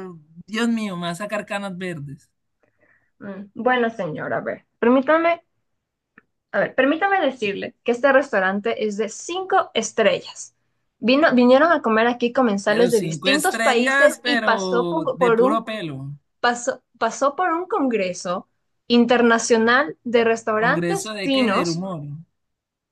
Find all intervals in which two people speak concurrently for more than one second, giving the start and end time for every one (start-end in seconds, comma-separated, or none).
12.6-15.6, 20.6-21.8